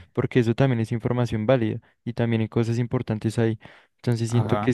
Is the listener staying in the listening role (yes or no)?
yes